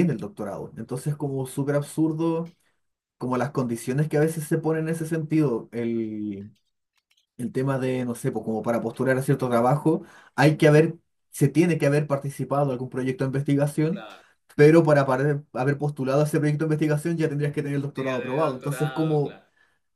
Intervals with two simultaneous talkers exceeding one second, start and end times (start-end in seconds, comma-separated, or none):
17.9-19.4